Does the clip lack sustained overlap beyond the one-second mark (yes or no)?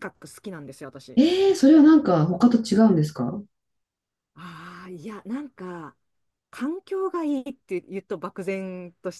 yes